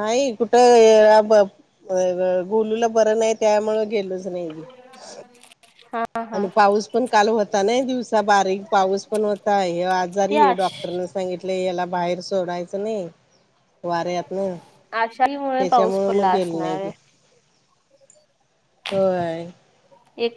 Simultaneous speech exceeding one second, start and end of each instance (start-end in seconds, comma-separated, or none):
15.6-16.9